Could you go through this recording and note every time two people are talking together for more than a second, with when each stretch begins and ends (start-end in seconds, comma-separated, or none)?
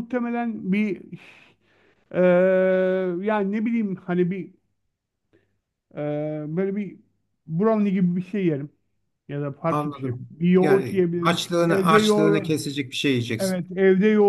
9.7-12.5